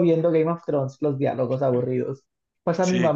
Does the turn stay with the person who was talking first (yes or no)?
yes